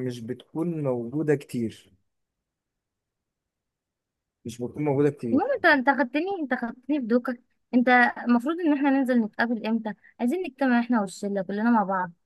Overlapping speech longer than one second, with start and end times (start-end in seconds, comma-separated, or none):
none